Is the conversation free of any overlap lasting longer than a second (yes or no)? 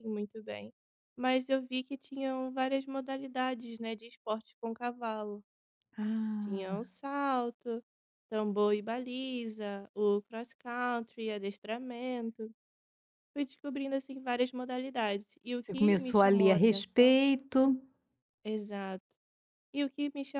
no